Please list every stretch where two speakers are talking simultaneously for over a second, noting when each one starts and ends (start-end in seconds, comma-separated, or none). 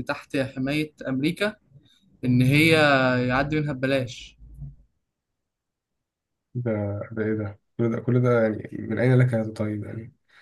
none